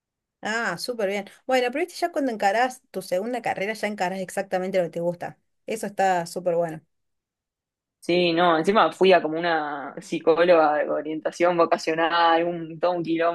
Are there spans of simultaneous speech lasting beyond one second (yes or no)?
no